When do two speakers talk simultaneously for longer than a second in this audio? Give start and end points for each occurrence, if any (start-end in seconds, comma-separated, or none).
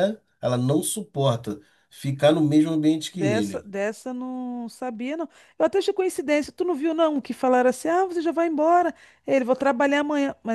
none